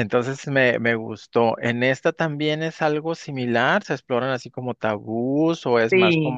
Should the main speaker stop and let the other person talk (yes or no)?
yes